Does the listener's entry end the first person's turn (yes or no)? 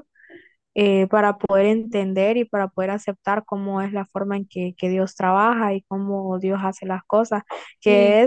no